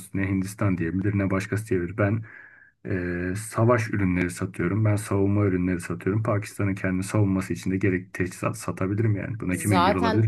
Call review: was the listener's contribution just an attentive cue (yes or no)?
no